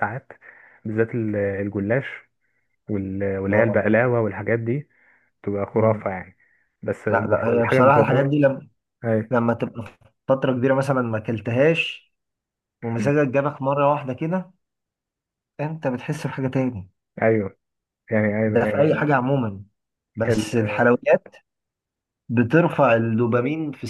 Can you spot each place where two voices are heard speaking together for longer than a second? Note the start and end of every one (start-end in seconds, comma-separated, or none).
7.1-8.3